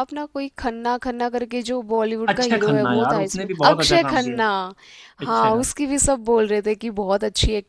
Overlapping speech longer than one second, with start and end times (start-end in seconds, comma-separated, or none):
2.3-4.4